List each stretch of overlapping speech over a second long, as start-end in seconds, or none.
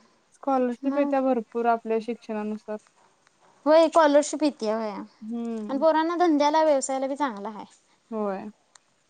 none